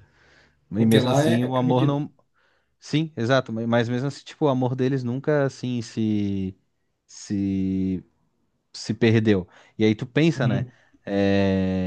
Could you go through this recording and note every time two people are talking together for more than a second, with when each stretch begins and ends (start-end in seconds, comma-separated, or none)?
0.8-2.0